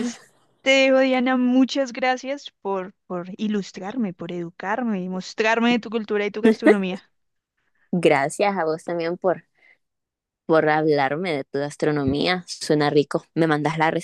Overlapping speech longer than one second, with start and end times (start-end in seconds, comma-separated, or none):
none